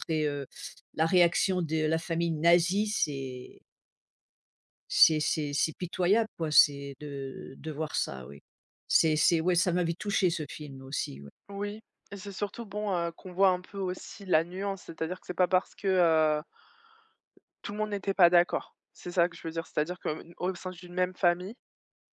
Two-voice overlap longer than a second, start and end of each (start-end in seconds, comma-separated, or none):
none